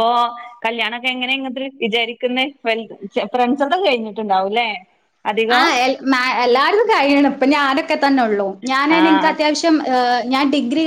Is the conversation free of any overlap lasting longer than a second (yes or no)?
yes